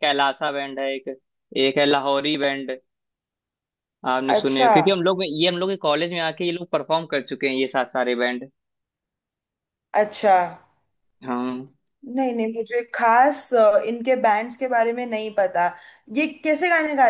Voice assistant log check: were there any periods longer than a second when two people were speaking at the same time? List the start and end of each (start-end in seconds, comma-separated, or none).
none